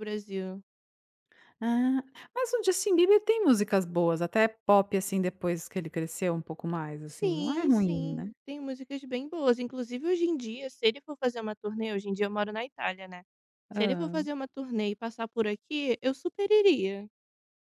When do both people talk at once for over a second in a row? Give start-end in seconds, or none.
7.1-8.3